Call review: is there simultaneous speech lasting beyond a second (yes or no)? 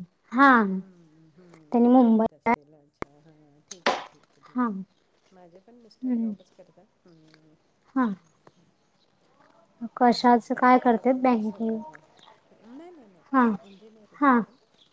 yes